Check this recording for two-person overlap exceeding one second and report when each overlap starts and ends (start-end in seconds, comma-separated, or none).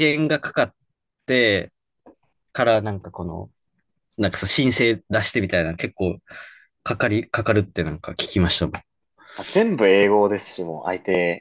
none